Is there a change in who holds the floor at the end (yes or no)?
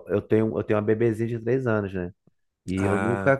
no